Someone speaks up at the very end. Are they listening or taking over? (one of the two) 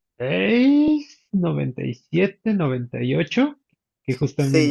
taking over